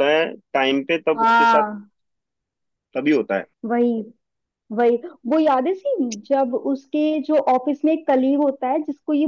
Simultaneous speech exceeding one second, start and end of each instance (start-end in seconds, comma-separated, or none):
none